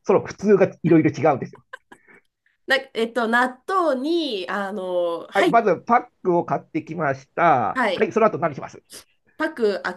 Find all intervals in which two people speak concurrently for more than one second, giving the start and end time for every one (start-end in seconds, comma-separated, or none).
none